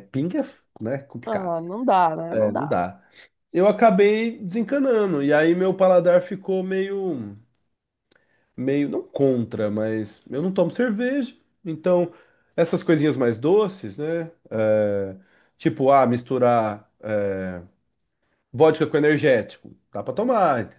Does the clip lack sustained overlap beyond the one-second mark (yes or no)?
yes